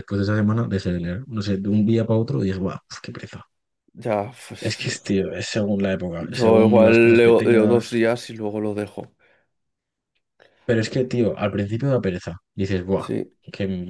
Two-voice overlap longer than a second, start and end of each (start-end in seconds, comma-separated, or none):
6.2-8.0